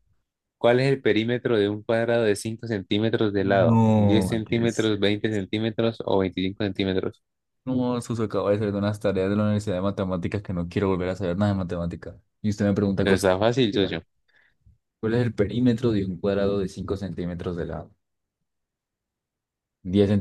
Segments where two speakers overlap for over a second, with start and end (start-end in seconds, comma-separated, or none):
3.4-4.9